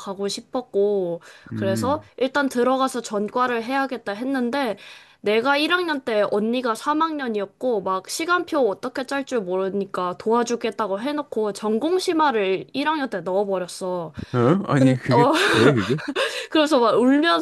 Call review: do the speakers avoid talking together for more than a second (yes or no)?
yes